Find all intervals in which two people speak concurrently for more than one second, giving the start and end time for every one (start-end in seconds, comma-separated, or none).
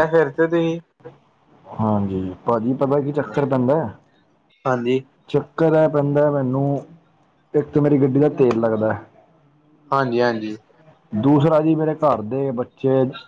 none